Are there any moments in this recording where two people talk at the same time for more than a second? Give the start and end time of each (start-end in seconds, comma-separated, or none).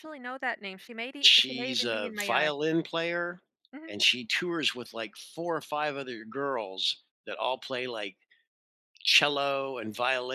1.2-2.5